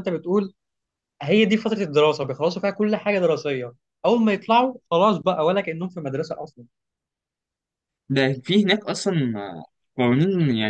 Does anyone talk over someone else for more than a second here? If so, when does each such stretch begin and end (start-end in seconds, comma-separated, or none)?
none